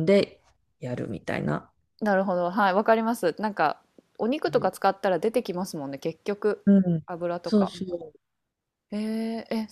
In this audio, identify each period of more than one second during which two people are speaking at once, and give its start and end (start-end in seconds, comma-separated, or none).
none